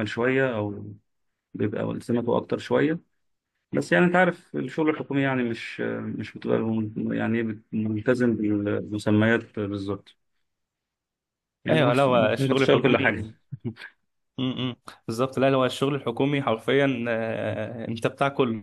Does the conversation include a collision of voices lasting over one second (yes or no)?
yes